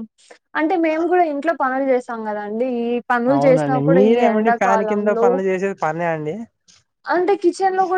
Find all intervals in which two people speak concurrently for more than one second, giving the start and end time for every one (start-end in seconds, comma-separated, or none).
3.3-5.3